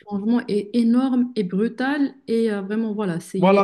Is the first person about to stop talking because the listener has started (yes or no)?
yes